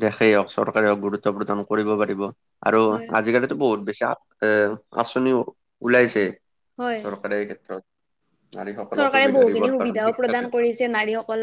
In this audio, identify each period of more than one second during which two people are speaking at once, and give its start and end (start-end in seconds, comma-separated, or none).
8.9-10.4